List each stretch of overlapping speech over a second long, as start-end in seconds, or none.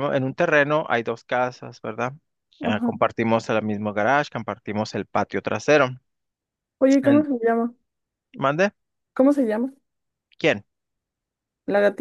none